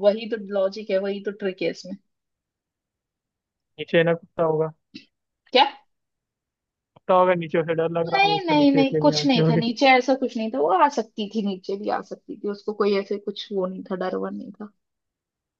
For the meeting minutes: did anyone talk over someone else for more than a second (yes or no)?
yes